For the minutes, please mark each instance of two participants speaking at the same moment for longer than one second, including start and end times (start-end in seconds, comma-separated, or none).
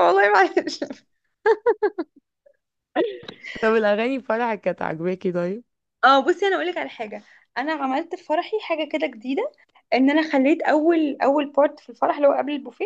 none